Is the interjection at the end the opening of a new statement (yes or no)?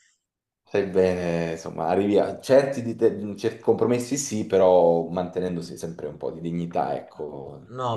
yes